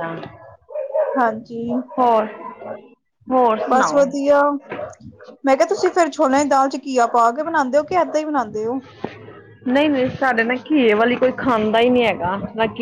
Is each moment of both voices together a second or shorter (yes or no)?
yes